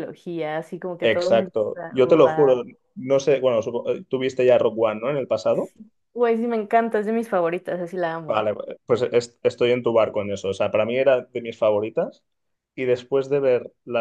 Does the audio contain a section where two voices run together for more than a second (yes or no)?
yes